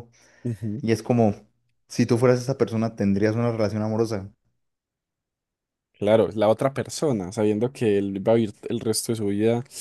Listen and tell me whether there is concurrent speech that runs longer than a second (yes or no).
no